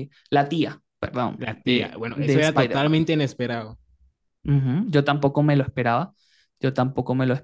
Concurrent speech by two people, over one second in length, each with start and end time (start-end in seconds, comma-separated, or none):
1.4-3.0